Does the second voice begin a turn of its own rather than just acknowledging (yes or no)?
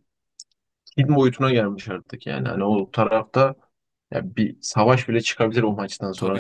yes